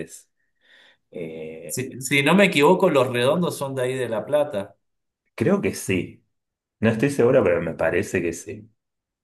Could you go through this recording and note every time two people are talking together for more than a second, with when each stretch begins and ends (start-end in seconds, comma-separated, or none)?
none